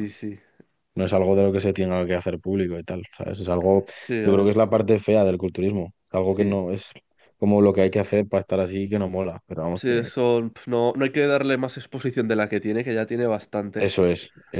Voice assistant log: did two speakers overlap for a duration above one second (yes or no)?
no